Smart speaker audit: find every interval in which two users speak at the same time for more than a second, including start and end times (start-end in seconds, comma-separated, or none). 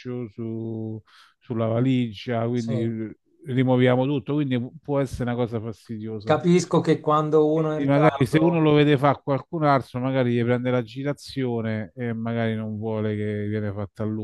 7.5-8.7